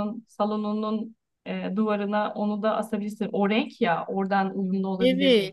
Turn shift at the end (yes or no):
yes